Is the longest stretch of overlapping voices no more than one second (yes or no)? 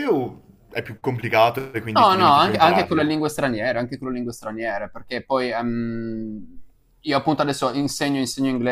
no